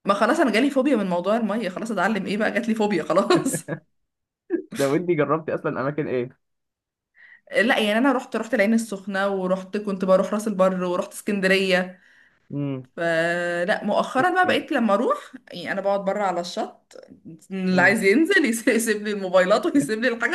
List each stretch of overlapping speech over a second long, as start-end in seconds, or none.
none